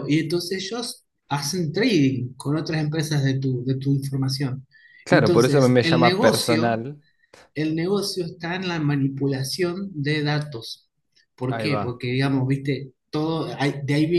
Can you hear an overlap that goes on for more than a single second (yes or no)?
yes